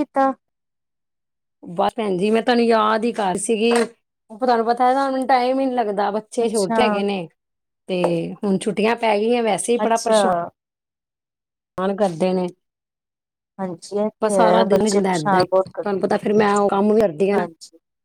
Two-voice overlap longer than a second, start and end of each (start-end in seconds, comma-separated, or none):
14.2-15.9